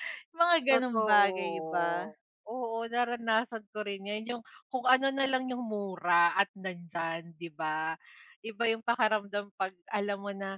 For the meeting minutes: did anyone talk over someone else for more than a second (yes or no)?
yes